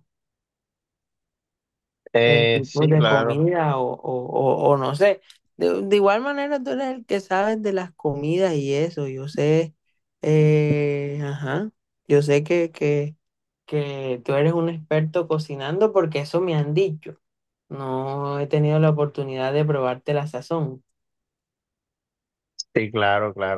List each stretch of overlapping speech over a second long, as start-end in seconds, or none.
2.2-3.4